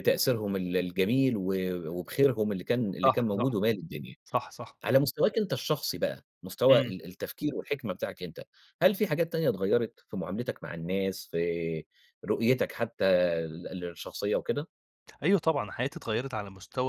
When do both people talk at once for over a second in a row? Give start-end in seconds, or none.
none